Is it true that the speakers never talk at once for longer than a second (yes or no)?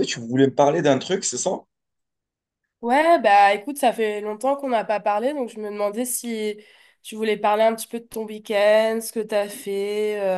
yes